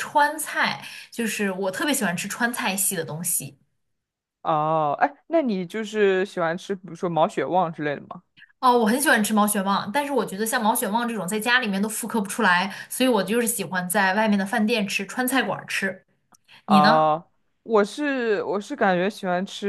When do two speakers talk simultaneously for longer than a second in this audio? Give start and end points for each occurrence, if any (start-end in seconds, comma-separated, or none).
none